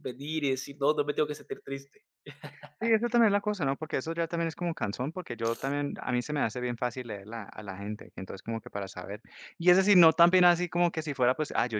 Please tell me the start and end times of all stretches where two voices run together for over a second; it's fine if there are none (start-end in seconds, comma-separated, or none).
none